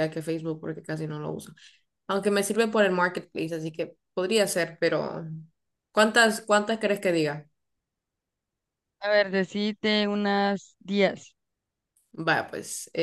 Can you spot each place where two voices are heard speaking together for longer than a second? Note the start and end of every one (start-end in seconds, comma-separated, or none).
none